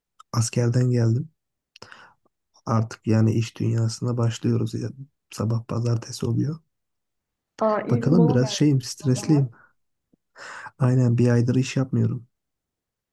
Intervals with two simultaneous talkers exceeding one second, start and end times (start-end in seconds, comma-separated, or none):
7.9-9.5